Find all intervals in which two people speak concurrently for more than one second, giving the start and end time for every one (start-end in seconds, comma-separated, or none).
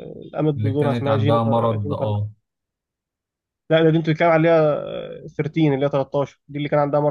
0.6-2.1